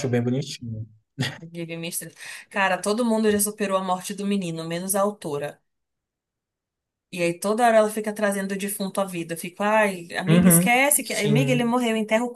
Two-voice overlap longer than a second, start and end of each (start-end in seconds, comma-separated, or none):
10.3-11.7